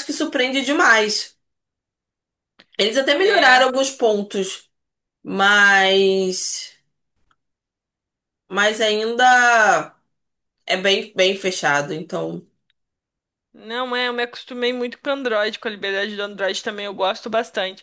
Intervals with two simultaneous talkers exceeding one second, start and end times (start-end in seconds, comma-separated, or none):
none